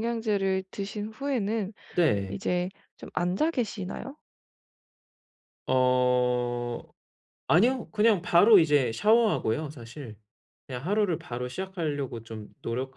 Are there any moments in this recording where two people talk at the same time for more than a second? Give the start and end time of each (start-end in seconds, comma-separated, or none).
none